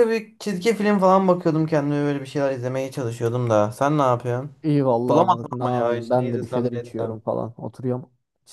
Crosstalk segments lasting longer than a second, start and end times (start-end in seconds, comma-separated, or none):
5.1-7.2